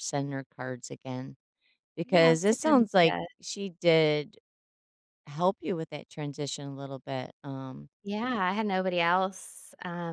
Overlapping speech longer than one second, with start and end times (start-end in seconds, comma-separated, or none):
2.0-3.3